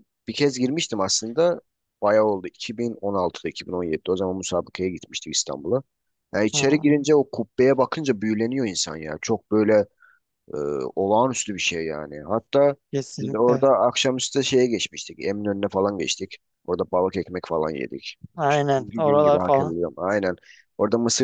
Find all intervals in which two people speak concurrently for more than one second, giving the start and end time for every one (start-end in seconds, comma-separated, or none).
18.4-19.7